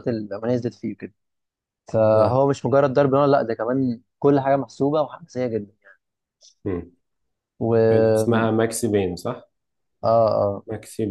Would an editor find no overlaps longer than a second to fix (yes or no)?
yes